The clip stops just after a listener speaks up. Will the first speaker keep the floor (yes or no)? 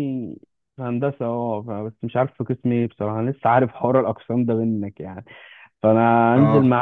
yes